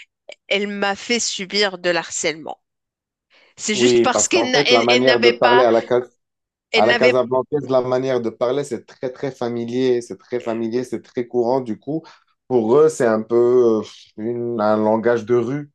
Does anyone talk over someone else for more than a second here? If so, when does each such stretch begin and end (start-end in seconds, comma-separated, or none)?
3.7-5.7